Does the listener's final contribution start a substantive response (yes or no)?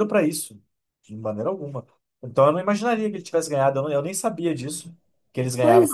yes